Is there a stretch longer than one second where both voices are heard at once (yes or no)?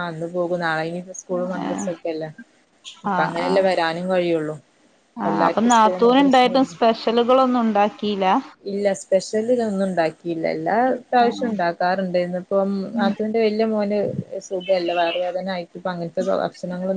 yes